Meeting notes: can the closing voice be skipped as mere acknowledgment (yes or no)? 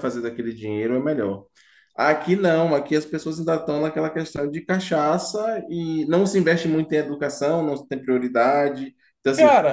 yes